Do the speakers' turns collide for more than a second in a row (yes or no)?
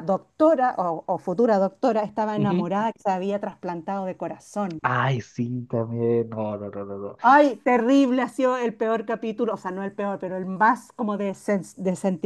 no